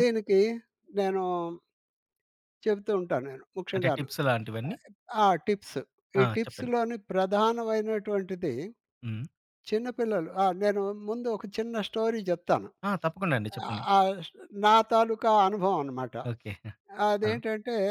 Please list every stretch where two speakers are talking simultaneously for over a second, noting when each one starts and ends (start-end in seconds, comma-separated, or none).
none